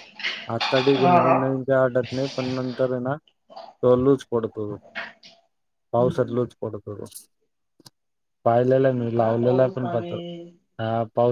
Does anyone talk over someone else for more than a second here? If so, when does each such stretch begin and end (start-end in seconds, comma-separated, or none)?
8.7-10.1